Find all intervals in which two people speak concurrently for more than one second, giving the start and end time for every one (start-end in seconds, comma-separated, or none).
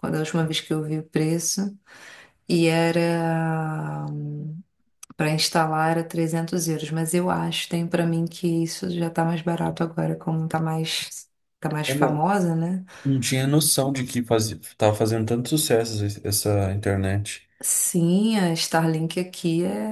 none